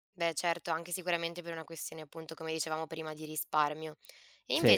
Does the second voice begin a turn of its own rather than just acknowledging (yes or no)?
no